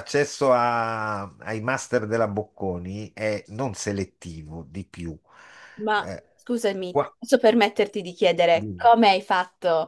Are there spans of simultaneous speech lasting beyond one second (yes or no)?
no